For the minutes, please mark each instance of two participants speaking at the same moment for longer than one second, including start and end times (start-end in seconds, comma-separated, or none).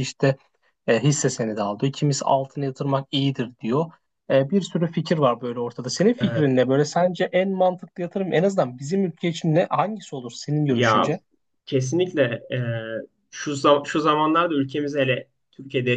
none